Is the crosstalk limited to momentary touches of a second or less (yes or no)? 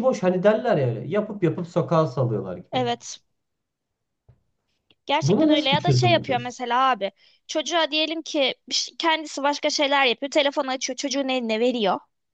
no